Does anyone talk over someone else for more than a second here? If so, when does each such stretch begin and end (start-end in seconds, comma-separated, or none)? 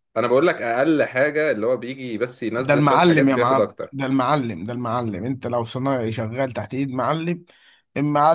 2.6-4.0